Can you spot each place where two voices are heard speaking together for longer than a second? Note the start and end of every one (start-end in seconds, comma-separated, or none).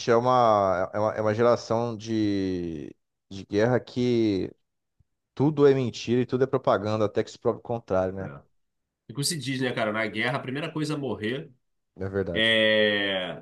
none